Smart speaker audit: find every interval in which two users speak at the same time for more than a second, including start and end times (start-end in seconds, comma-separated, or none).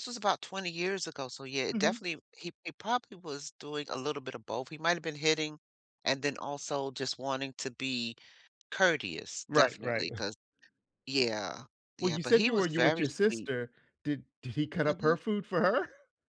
12.0-13.5